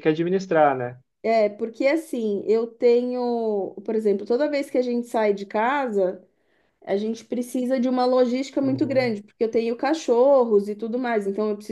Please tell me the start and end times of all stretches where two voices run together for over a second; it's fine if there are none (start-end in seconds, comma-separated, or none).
none